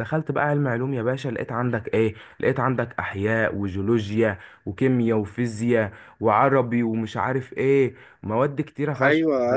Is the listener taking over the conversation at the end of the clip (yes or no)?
yes